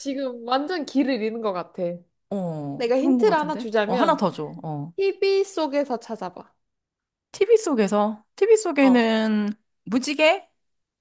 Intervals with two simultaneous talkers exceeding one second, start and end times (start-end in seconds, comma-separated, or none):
2.8-4.2